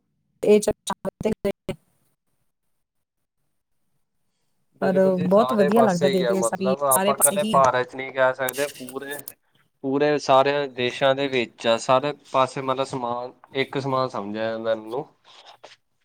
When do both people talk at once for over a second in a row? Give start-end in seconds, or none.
4.8-7.6